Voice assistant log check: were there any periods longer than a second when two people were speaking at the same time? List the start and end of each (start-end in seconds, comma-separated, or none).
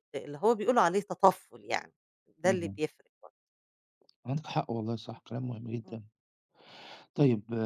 none